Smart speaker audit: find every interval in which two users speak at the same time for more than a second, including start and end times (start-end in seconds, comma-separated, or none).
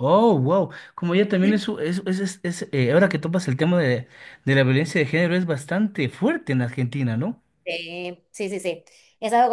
none